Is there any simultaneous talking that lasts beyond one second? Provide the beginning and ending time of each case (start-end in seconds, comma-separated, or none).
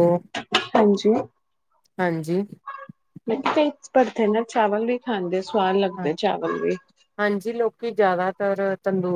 none